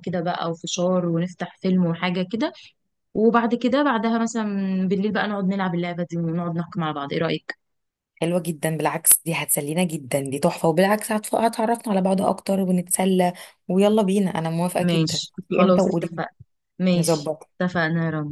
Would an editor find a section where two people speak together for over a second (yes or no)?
yes